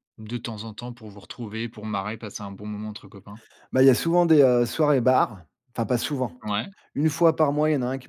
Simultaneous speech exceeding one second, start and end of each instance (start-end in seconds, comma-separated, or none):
none